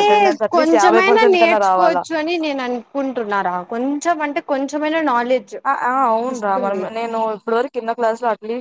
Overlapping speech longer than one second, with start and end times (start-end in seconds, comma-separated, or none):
0.5-2.0